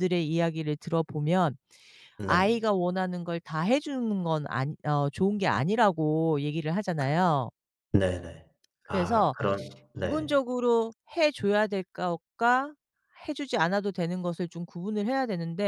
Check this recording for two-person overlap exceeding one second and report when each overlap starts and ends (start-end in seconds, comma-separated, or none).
none